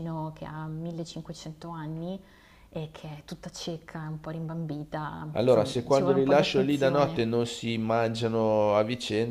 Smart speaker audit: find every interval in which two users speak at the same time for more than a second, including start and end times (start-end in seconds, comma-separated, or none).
5.3-7.2